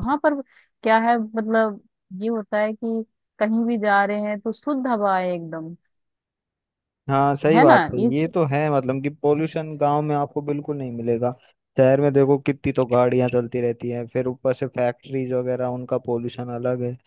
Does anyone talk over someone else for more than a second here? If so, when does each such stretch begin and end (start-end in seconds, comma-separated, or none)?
none